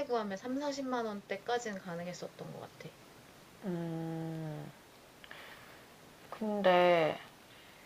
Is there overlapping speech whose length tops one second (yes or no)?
no